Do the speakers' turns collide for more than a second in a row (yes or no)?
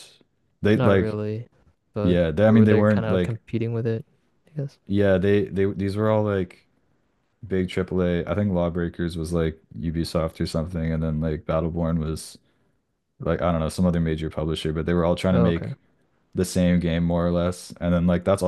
yes